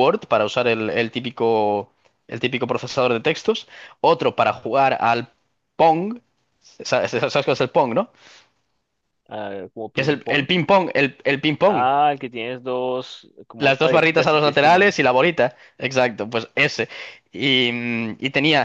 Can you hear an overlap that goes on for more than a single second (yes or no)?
yes